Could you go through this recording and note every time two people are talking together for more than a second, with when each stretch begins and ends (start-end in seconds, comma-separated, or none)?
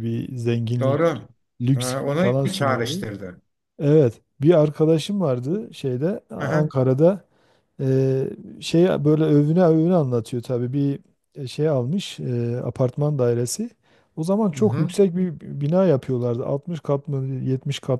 1.7-3.1